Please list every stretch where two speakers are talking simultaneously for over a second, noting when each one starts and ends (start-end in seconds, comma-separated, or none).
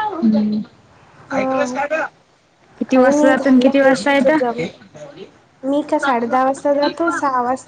2.9-4.6